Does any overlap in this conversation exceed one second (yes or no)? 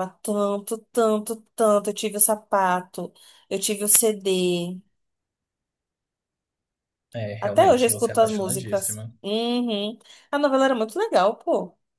yes